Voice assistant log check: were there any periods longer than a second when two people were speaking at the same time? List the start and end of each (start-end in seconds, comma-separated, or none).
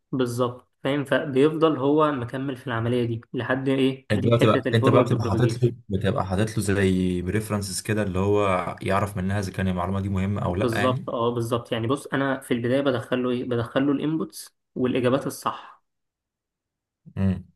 4.1-5.7